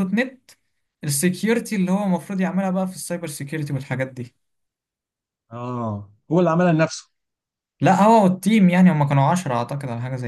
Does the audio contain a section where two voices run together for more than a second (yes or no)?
no